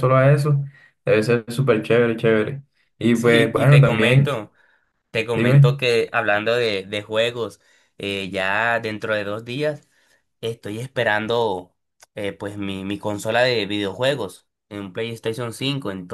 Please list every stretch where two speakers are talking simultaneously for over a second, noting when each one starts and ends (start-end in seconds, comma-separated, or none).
3.1-4.4